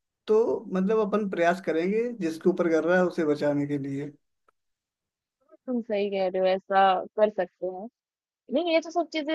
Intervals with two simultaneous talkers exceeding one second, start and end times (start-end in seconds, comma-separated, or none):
none